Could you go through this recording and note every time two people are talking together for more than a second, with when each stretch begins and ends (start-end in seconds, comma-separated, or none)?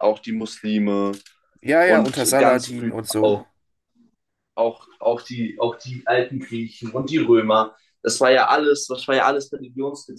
1.8-3.4